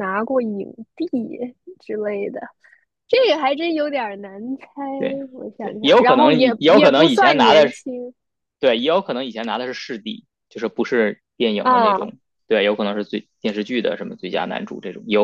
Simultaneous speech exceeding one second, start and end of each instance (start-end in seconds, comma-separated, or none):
5.6-7.8